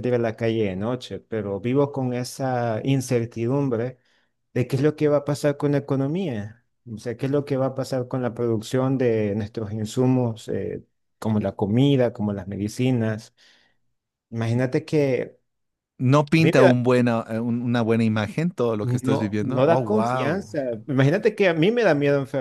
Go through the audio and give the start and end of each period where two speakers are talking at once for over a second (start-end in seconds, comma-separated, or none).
18.8-20.6